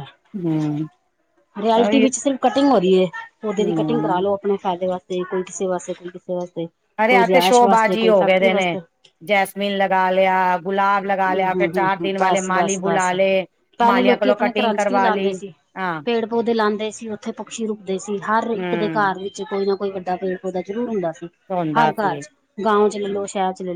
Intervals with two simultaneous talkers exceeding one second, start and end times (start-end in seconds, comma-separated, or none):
7.1-8.8